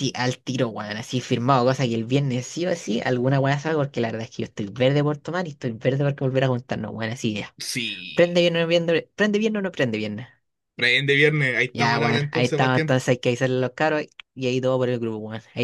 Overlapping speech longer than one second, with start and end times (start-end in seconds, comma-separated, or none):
11.7-13.0